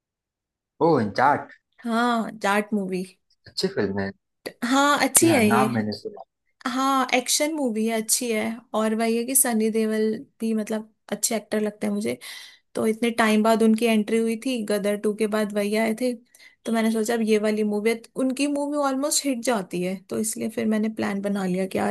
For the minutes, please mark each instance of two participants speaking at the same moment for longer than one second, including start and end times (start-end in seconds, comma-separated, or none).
none